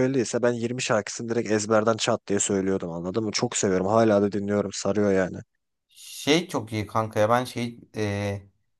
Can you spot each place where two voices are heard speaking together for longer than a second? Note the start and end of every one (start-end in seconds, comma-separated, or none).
none